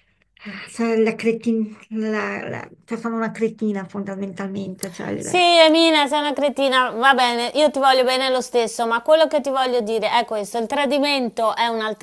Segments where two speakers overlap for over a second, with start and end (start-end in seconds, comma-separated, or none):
none